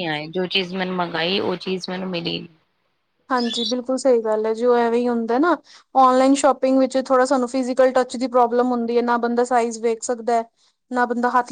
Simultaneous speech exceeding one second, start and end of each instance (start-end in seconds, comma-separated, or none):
none